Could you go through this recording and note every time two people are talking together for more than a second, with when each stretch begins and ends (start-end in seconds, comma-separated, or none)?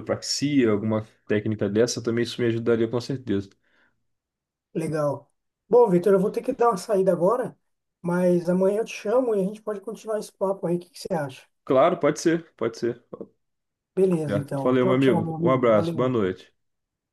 14.0-16.1